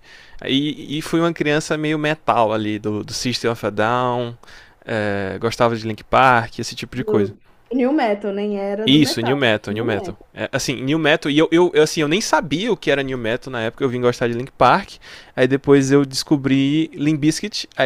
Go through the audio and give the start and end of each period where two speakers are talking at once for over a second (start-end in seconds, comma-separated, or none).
8.8-10.3